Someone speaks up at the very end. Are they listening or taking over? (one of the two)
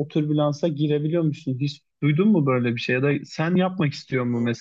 listening